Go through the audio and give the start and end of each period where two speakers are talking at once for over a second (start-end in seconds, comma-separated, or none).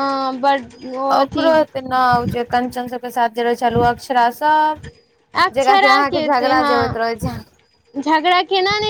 none